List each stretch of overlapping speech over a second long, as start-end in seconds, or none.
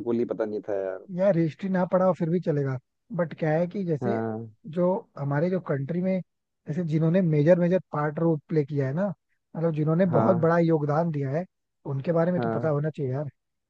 none